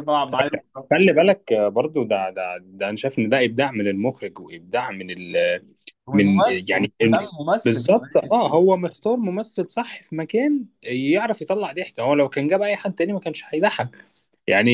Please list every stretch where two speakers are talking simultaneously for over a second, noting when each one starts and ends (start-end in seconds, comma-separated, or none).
6.1-8.3